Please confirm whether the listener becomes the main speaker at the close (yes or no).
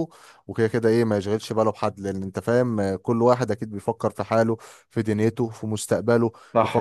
no